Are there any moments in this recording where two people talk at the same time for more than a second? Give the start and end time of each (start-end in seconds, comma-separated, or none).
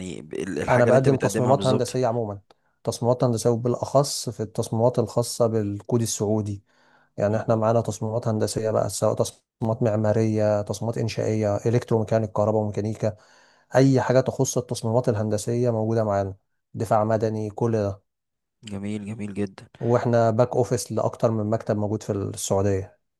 0.7-2.0